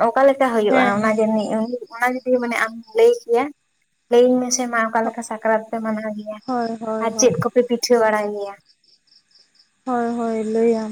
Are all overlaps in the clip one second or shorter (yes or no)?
yes